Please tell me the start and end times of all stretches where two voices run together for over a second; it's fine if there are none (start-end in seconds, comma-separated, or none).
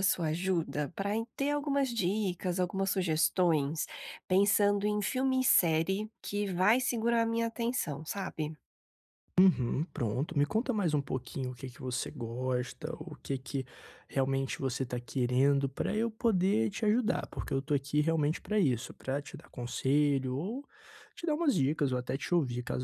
none